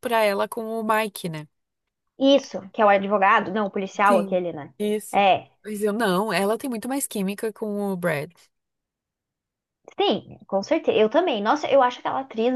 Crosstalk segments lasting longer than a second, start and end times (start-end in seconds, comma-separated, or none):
none